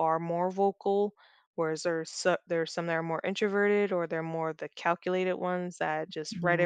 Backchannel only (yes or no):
yes